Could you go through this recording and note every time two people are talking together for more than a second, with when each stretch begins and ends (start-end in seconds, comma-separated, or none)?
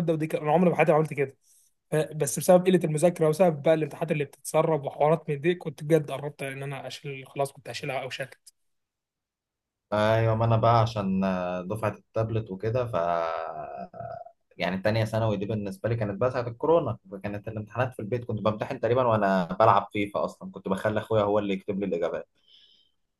none